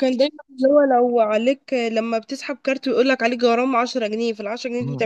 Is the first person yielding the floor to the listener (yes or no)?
yes